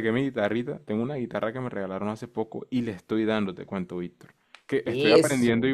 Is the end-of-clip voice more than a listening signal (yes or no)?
no